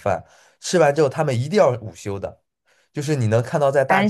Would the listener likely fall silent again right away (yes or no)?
yes